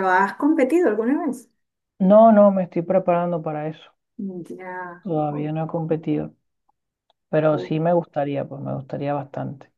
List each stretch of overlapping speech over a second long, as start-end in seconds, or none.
none